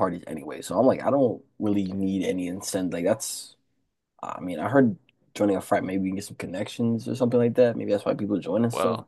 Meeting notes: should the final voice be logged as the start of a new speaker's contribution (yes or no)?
yes